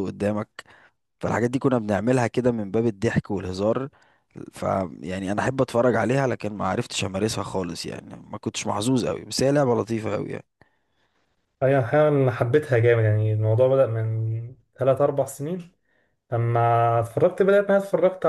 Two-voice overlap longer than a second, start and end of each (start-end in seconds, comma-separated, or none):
none